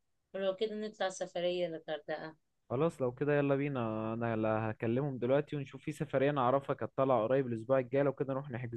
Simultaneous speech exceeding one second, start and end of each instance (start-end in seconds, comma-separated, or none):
none